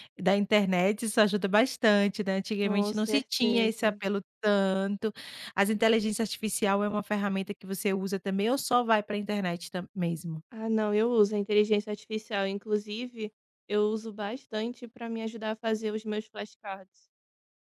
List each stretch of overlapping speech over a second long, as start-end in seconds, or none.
2.6-4.0